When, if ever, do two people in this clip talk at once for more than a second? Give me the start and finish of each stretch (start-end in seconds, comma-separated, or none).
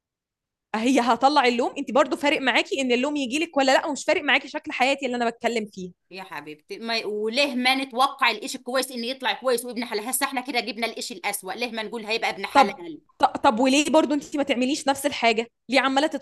none